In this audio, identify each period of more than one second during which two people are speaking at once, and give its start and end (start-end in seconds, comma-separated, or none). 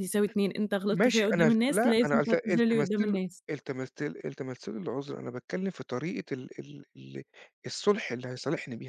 0.9-3.4